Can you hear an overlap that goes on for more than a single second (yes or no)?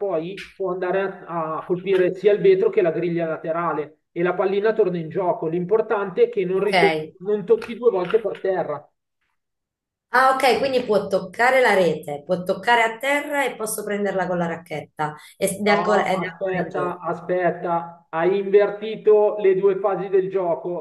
yes